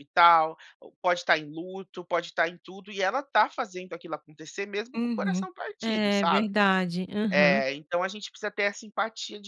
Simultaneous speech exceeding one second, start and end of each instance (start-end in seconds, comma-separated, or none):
5.0-6.5